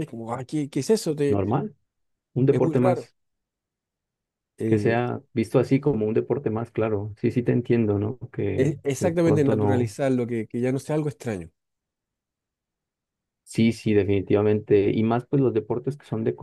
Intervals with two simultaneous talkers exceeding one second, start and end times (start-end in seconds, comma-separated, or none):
8.6-10.0